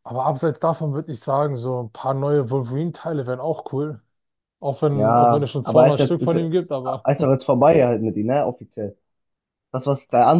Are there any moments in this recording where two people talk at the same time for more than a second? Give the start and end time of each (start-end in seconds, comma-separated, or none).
4.9-6.4